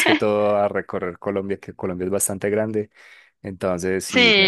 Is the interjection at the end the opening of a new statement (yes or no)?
yes